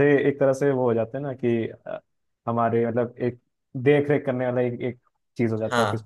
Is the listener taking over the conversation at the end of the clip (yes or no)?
yes